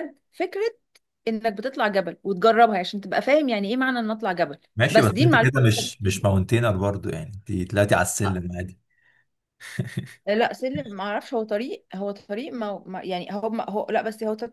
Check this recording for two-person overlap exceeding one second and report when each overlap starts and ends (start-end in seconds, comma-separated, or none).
4.7-6.3